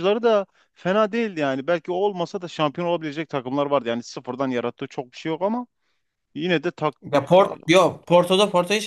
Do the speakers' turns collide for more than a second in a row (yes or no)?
no